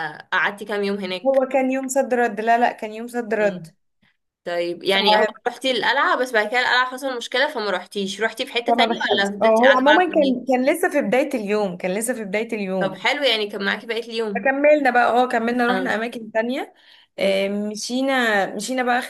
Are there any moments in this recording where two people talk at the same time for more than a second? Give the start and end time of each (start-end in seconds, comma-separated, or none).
8.7-10.4